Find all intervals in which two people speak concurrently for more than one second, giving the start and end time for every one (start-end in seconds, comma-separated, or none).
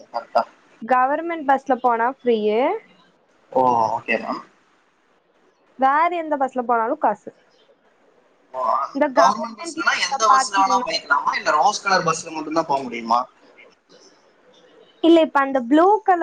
9.2-10.9